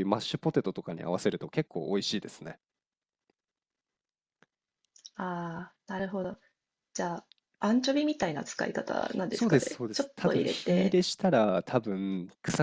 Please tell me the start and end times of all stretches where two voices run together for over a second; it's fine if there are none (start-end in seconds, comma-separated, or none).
9.3-11.0